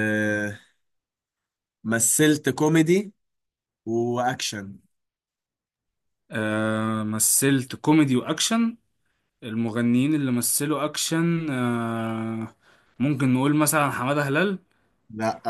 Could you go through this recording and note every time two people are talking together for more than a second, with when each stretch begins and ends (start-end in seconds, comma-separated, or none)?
none